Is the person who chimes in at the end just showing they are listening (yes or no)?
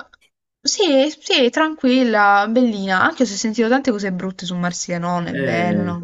no